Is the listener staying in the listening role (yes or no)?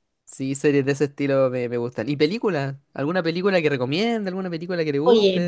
no